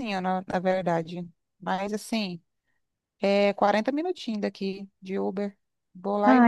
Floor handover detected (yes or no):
yes